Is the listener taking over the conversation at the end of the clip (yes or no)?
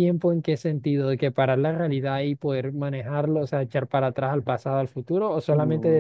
yes